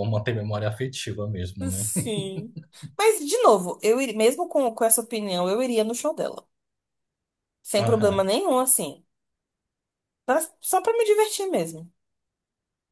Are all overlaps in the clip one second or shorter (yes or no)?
yes